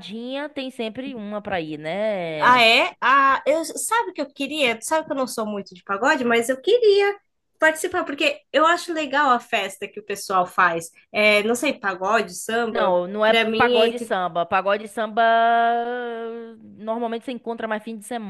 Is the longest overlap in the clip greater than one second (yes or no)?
yes